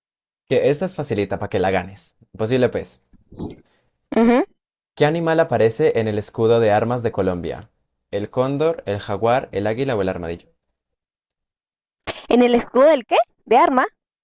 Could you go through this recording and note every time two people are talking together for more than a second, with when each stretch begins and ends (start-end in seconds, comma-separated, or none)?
none